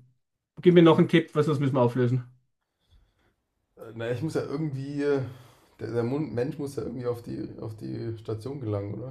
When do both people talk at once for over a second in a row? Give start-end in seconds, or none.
none